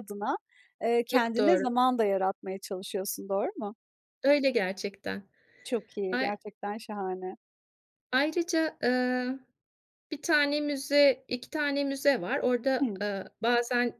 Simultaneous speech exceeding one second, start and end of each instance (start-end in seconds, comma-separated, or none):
none